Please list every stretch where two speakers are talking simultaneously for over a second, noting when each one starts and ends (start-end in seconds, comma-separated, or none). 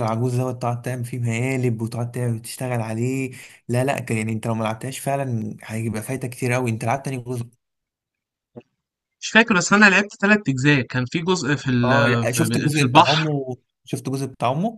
11.8-13.3